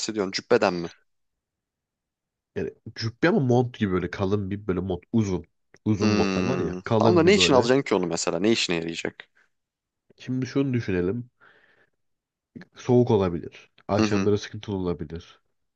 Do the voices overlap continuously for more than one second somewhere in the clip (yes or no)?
yes